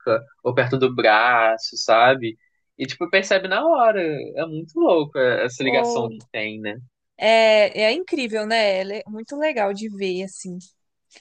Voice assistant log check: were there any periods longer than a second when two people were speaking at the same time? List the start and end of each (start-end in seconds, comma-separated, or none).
none